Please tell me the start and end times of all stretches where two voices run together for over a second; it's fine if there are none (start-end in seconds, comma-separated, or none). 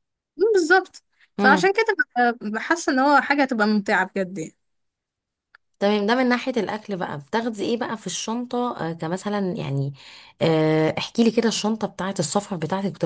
none